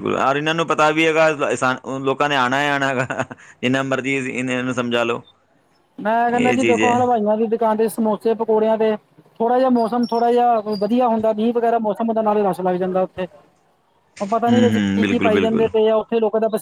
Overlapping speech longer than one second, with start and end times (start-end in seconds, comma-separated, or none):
14.5-15.7